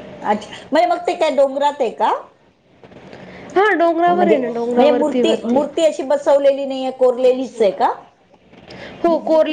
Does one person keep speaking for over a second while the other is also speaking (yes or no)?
yes